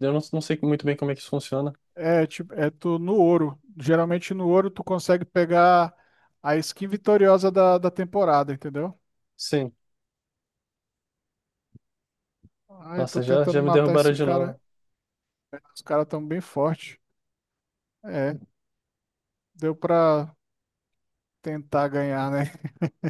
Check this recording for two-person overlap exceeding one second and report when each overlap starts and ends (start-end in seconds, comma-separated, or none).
13.0-14.5